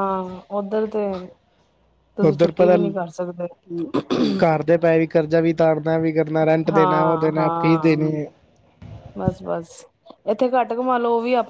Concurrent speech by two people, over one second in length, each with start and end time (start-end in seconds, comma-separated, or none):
6.7-8.0